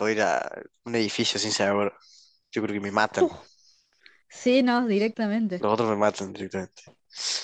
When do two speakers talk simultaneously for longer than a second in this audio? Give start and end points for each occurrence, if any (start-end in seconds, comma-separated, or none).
none